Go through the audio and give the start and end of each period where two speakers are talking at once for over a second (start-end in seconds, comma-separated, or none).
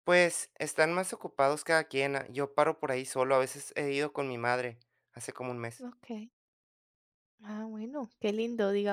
none